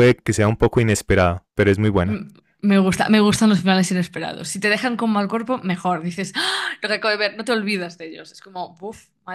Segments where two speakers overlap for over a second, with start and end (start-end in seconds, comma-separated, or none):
none